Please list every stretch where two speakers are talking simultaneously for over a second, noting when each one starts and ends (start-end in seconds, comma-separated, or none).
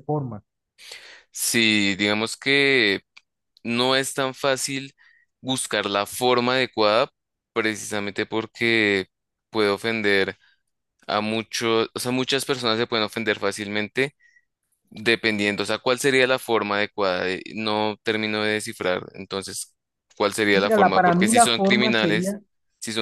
20.5-22.4